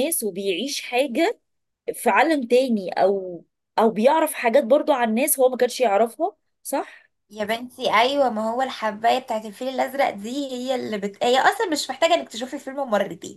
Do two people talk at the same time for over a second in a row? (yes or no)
no